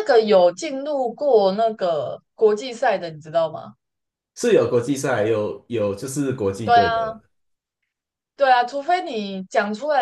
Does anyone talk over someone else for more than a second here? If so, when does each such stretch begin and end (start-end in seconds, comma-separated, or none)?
none